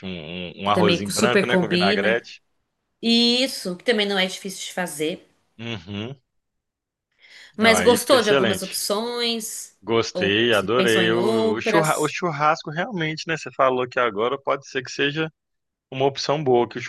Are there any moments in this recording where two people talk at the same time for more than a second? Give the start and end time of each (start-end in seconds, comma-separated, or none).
0.6-2.2, 7.6-8.8, 10.1-12.2